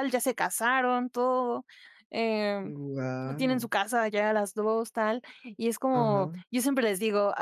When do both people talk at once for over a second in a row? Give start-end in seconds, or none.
none